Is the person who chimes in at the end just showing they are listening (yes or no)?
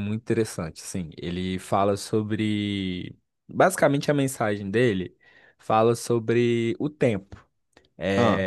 yes